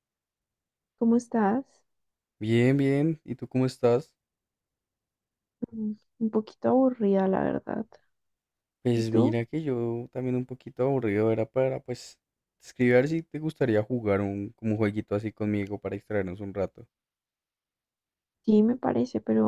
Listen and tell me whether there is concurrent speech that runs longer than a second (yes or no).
no